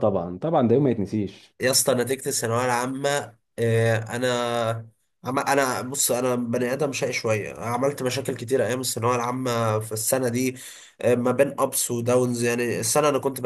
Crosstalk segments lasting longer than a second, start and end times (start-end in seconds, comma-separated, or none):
none